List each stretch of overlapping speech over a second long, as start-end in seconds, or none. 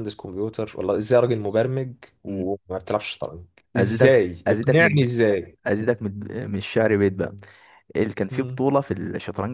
3.8-5.1